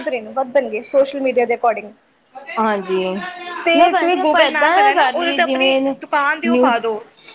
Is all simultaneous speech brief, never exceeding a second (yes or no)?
no